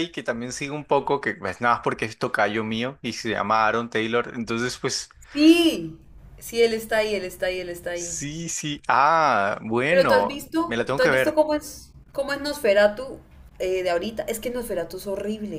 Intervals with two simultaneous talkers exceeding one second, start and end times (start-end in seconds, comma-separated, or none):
9.9-11.4